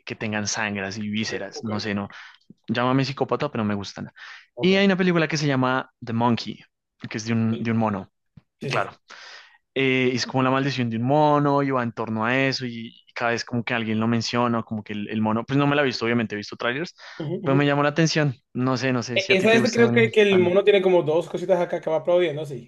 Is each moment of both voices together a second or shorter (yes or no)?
no